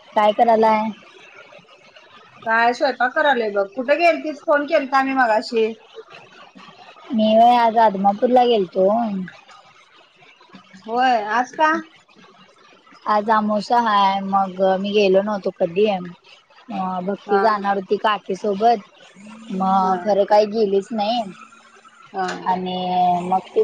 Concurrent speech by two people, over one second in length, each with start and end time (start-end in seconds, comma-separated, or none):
none